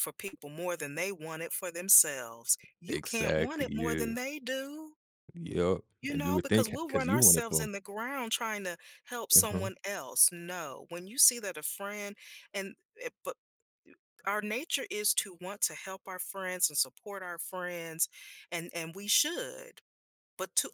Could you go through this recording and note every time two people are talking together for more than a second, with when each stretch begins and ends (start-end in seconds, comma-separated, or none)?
2.9-4.1, 6.0-7.7